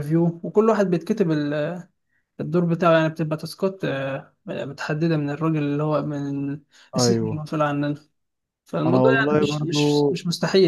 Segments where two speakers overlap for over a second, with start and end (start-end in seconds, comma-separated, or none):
8.9-10.1